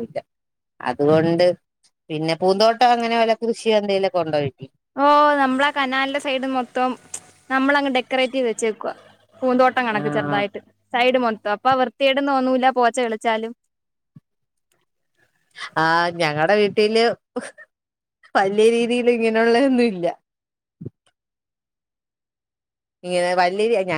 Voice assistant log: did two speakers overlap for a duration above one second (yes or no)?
no